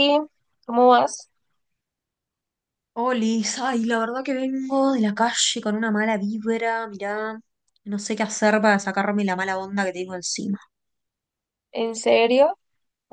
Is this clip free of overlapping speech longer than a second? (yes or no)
yes